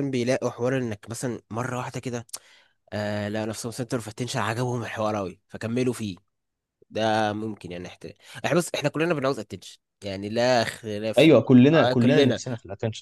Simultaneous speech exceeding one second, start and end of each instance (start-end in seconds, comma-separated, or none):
11.2-12.4